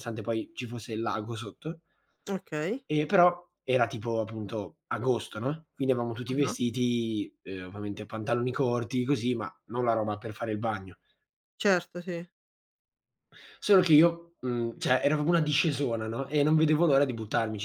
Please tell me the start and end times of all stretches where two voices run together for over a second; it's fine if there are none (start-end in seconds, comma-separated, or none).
none